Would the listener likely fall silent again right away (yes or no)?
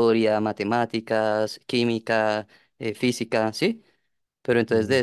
yes